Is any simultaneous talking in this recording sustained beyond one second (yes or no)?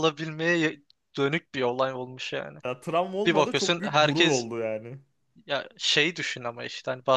yes